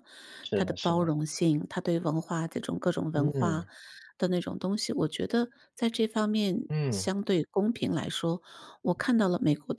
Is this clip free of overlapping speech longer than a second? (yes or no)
yes